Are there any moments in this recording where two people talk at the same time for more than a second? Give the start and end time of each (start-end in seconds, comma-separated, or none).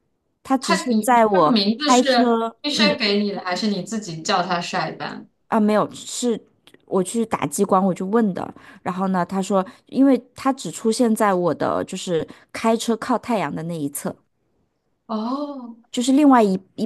0.6-3.0